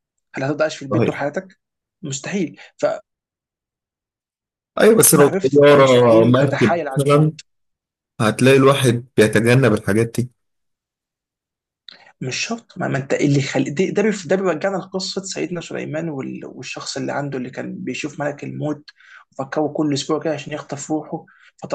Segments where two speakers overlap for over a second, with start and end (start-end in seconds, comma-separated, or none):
5.2-7.3